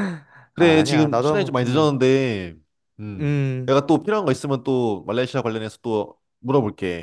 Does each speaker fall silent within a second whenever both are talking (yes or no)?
no